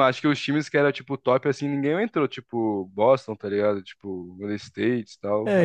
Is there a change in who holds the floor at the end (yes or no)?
yes